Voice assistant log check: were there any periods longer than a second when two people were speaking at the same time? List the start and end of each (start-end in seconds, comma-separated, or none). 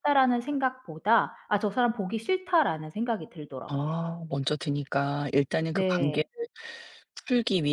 none